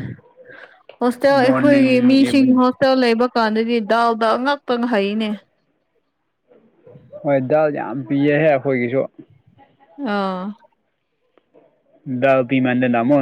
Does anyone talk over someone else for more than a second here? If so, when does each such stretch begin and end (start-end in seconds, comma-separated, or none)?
1.3-2.6